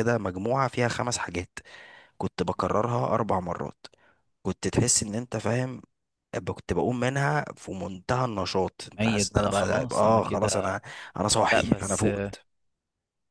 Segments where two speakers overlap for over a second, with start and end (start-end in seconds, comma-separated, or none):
9.0-10.8